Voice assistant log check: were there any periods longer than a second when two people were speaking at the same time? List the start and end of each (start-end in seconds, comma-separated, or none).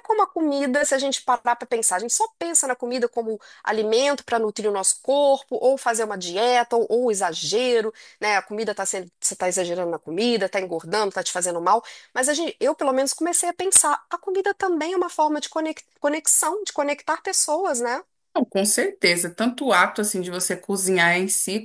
none